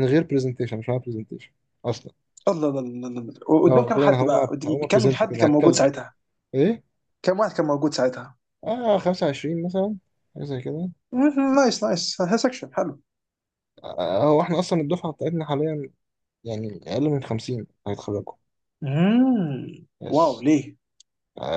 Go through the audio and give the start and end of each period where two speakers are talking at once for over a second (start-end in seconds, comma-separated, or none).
3.7-5.8